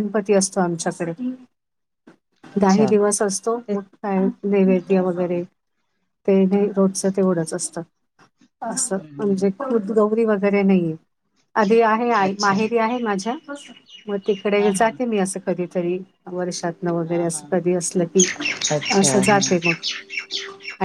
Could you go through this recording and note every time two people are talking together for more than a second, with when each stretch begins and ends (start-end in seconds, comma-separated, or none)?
none